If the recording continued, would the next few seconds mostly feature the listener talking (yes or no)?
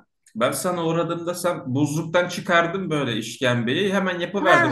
yes